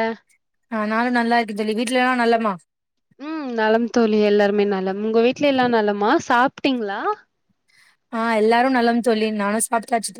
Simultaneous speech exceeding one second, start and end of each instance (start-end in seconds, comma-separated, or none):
none